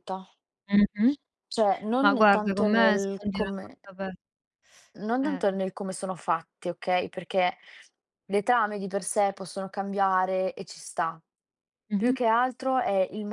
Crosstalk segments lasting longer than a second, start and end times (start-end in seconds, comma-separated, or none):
2.0-3.8